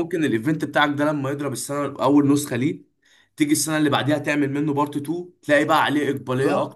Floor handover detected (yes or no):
yes